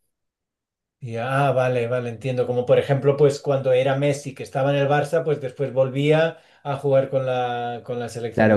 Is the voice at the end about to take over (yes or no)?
yes